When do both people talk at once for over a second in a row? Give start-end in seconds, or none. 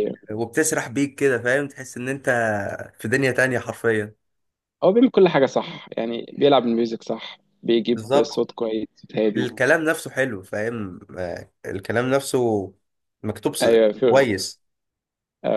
none